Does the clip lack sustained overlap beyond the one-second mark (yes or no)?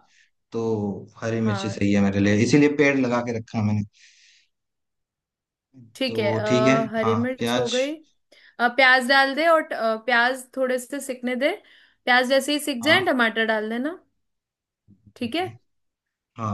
no